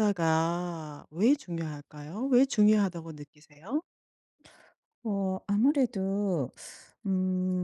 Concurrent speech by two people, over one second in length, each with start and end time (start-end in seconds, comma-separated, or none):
none